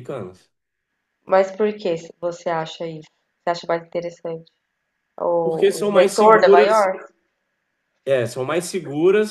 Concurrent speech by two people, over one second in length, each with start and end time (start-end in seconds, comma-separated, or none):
5.4-6.8